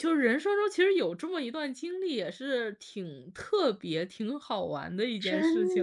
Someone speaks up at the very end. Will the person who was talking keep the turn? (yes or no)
no